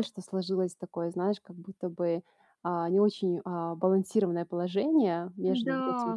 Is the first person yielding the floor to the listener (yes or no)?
no